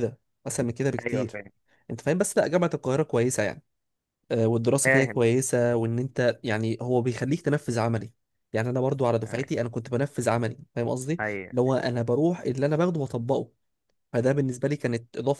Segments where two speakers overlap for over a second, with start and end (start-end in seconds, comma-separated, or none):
none